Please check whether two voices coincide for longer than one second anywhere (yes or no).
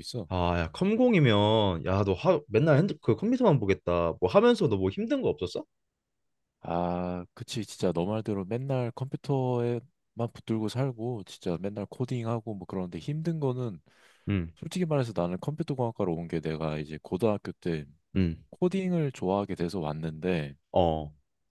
no